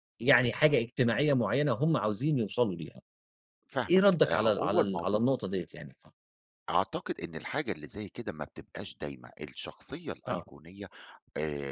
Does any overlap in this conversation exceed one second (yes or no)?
yes